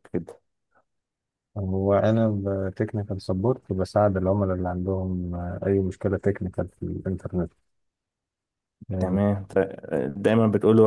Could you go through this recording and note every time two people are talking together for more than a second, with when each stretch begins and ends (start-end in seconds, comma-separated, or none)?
none